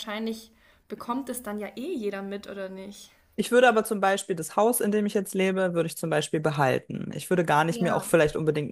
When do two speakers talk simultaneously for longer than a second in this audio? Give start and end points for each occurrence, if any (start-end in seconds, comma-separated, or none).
none